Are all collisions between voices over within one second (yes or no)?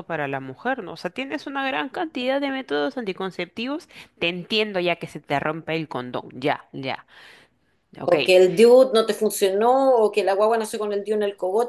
yes